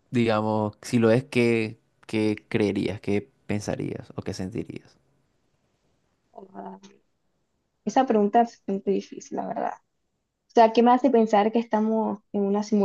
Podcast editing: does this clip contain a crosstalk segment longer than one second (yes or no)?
no